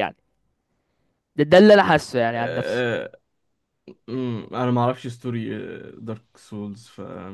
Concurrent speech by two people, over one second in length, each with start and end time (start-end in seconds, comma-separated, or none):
none